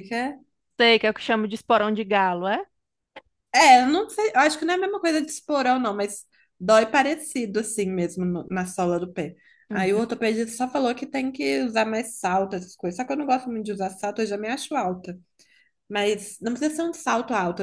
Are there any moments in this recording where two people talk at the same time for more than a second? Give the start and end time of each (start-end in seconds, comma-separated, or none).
none